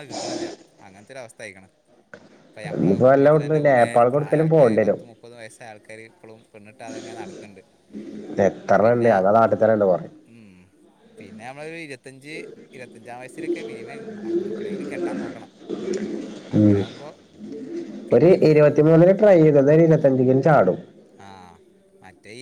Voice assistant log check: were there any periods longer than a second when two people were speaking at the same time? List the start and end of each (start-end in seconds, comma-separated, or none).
2.8-5.0